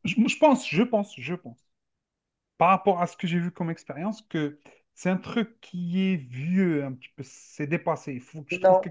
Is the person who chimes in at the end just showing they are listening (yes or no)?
yes